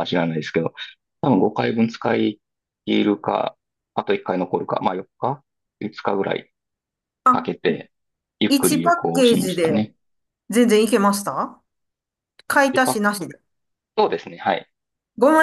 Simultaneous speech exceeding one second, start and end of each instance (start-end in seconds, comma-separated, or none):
8.5-9.9